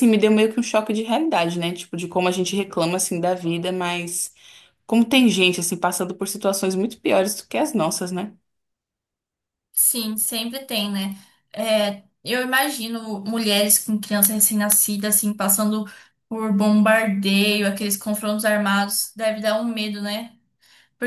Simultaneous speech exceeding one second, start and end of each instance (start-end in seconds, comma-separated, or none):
none